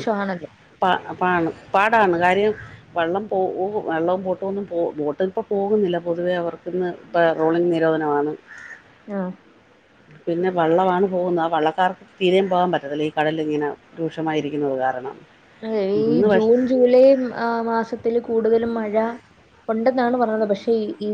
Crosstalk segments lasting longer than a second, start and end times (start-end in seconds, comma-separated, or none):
none